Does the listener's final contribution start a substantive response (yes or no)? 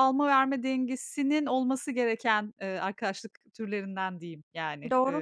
yes